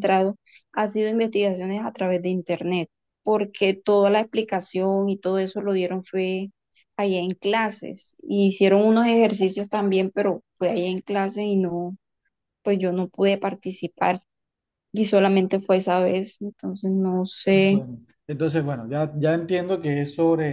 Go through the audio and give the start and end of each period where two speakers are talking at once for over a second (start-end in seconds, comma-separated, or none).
none